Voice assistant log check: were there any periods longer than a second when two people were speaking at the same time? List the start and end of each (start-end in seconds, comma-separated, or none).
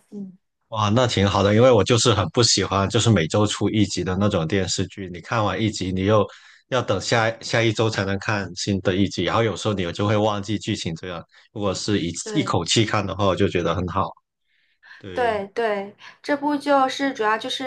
none